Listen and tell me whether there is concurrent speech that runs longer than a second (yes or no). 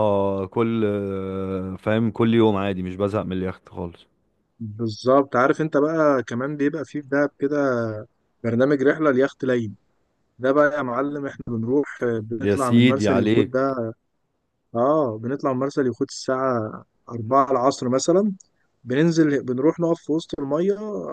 yes